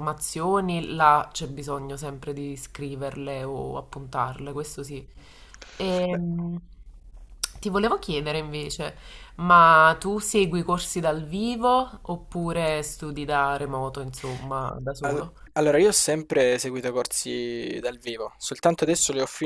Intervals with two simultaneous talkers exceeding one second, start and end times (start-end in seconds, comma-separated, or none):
none